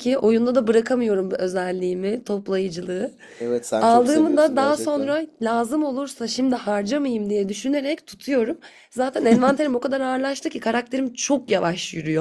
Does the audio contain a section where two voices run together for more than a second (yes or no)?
yes